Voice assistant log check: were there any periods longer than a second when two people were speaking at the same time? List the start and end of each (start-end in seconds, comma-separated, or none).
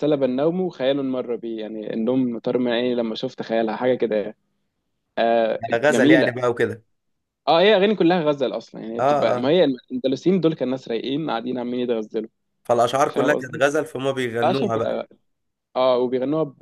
none